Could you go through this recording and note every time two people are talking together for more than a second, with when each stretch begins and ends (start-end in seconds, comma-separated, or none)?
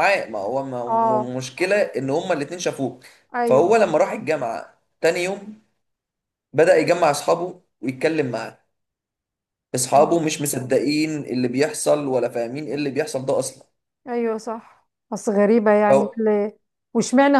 none